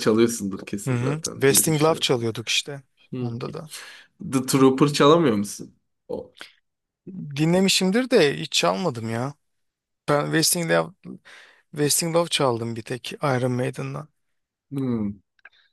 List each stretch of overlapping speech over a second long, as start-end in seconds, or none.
0.9-2.1